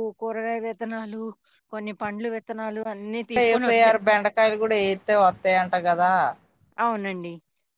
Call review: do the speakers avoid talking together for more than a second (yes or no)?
yes